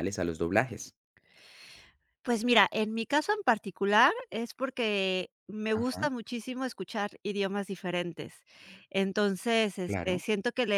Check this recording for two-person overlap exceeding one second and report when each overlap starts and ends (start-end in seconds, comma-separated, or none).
none